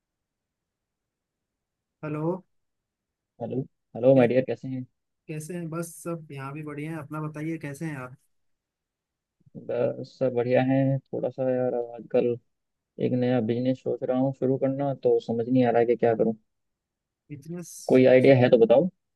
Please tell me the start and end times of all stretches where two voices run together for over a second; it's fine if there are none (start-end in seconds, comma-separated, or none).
none